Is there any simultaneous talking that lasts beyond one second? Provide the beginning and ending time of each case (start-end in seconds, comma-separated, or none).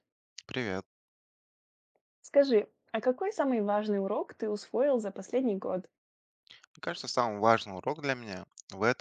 none